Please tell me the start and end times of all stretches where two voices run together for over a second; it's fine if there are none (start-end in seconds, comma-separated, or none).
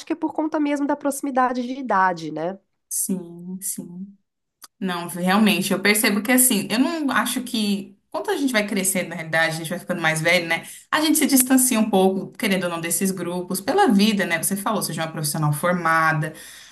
none